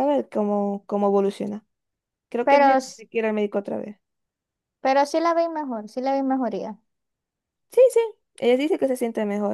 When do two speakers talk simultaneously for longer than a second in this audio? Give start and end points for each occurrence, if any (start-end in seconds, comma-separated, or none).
none